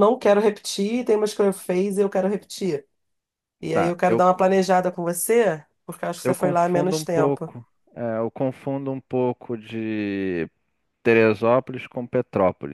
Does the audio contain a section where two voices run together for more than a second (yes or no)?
yes